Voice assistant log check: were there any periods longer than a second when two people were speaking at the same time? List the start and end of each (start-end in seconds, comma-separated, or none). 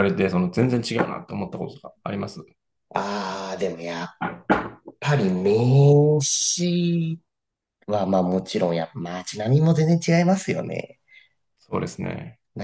none